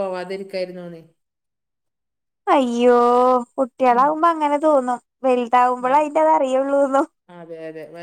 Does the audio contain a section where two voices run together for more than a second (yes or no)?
no